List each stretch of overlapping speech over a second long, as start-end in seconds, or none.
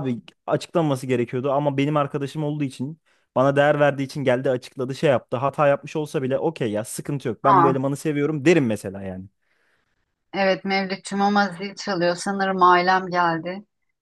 none